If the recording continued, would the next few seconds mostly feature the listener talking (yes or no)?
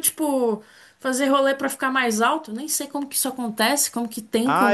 yes